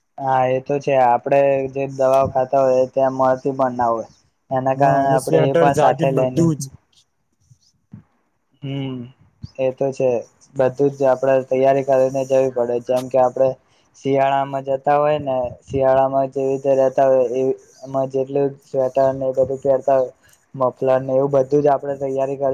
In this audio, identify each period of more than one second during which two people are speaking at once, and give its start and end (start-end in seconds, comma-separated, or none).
4.8-6.4